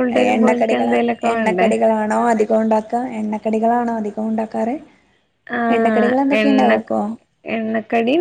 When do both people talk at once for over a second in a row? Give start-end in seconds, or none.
none